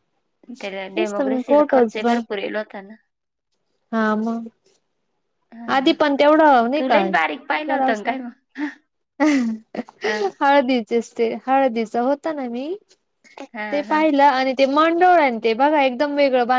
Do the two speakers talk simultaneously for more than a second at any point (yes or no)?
yes